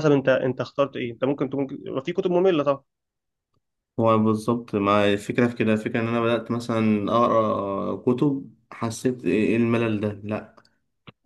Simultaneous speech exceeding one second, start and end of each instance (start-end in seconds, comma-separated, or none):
none